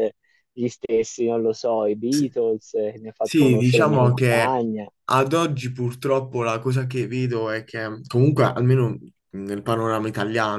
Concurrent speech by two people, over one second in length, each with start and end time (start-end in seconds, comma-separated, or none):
3.2-4.7